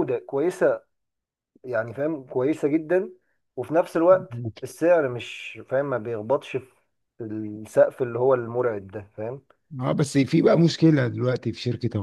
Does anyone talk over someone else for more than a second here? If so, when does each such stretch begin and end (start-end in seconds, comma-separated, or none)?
none